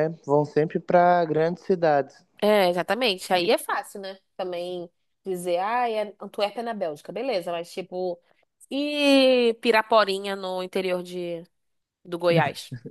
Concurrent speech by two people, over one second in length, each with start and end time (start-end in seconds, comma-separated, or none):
none